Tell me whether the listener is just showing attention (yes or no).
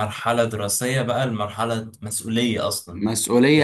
no